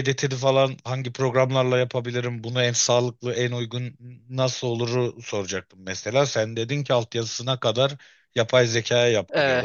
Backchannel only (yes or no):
no